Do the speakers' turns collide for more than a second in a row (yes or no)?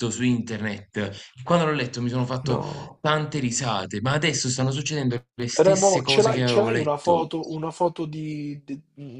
yes